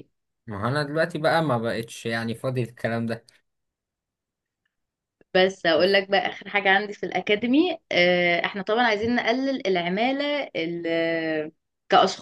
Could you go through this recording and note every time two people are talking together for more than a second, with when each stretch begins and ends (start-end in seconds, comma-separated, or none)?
none